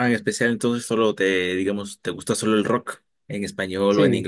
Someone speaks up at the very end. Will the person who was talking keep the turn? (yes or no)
no